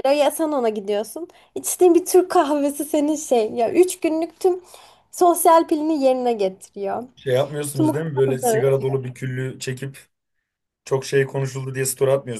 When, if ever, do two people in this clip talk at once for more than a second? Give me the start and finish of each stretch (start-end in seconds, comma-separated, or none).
none